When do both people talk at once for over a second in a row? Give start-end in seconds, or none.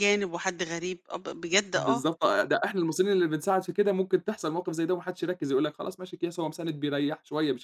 none